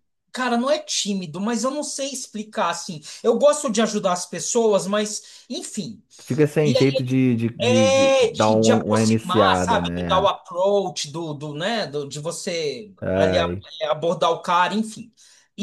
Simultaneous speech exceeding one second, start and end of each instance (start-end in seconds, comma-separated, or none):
7.6-10.3